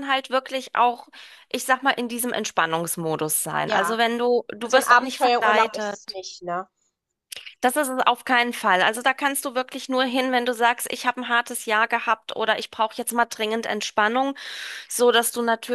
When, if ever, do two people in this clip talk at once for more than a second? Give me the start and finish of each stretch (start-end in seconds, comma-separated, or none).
4.6-6.2